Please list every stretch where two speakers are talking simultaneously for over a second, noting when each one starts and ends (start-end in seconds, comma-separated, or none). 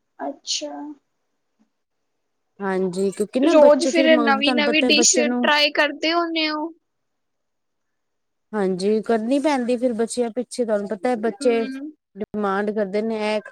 3.5-5.5